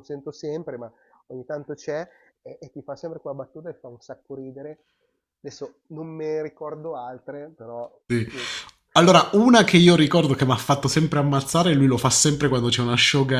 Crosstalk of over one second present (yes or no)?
no